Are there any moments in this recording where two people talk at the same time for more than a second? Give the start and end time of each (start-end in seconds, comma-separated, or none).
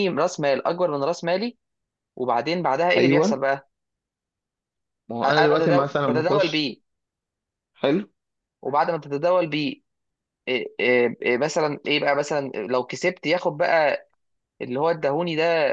5.2-6.7